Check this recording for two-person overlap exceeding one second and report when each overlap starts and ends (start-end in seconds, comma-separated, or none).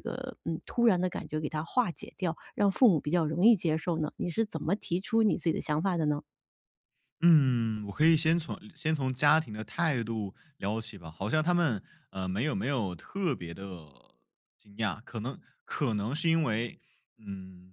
none